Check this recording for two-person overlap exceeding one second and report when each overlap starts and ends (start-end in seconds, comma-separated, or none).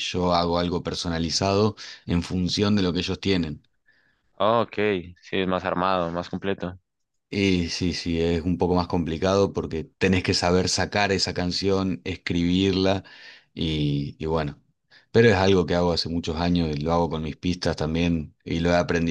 none